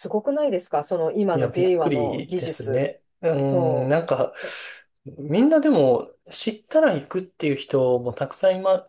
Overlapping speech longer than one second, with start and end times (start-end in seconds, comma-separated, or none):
1.3-2.9